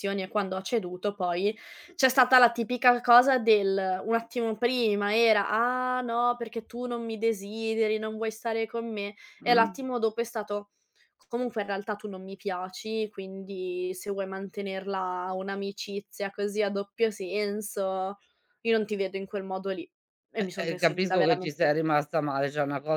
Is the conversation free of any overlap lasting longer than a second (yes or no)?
no